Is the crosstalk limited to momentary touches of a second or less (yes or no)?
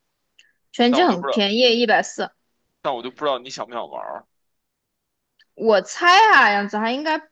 yes